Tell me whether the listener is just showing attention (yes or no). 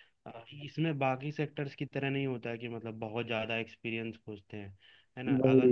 yes